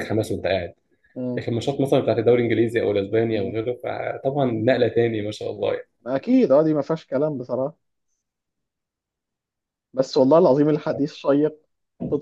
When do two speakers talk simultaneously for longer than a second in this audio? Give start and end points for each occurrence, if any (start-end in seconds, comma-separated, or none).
none